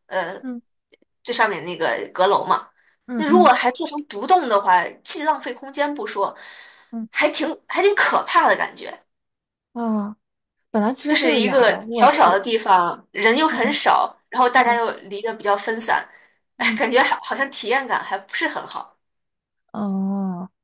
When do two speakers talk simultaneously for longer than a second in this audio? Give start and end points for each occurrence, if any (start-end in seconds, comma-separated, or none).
11.1-12.4